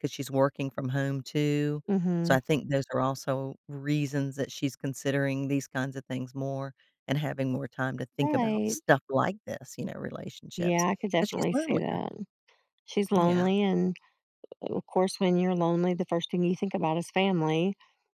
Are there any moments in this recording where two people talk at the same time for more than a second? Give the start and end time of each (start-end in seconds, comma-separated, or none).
10.6-12.0